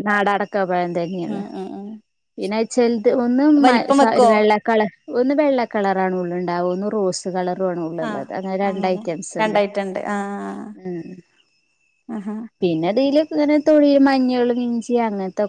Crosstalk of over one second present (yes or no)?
no